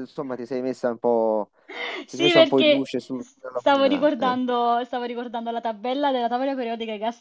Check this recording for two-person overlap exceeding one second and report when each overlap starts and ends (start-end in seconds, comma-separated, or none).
2.1-4.4